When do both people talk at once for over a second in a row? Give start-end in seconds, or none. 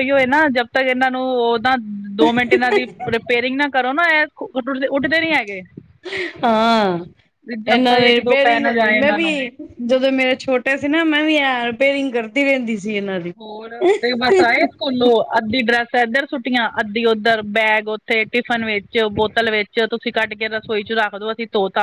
7.7-9.3